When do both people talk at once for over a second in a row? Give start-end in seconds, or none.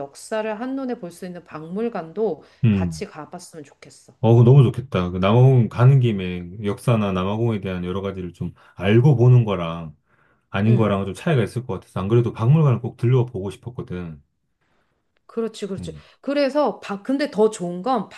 none